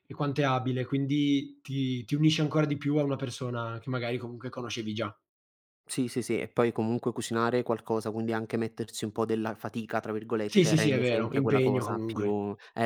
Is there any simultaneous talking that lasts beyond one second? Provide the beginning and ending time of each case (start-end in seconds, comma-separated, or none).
10.5-12.3